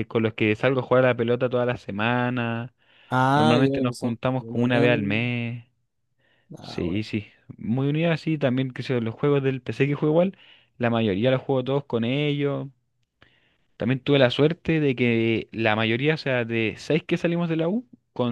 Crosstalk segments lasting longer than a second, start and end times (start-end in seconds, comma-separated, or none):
3.3-5.3